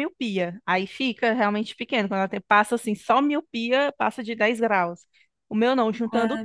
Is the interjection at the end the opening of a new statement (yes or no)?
no